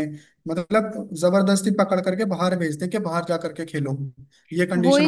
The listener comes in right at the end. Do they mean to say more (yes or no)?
yes